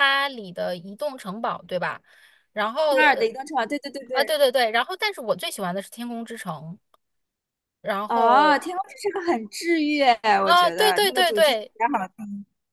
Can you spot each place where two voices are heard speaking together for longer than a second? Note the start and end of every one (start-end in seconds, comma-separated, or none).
10.4-11.7